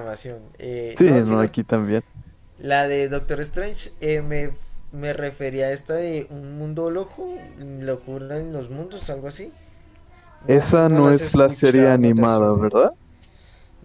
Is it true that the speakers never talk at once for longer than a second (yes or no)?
no